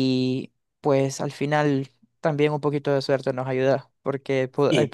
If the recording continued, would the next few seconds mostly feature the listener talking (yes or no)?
no